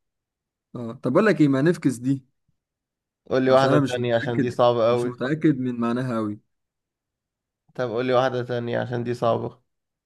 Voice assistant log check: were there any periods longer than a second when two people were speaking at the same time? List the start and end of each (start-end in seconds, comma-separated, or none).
3.5-5.2